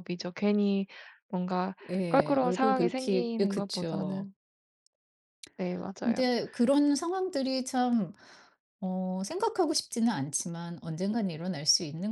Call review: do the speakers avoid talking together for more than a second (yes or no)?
no